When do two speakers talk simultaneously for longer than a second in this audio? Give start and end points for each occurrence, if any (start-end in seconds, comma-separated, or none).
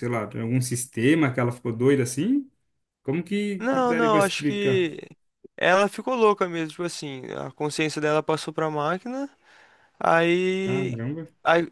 3.6-4.8